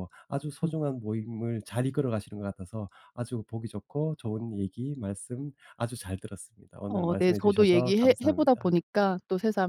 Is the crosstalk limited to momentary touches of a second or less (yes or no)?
no